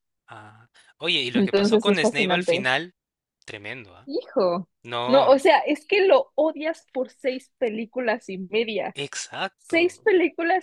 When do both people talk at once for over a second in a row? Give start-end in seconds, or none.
1.3-2.7